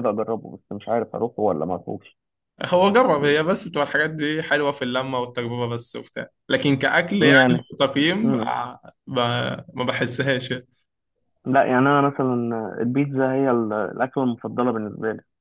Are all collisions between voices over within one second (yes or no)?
yes